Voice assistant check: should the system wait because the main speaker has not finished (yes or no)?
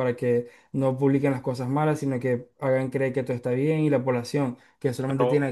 no